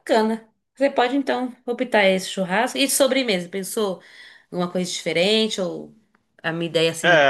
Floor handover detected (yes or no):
yes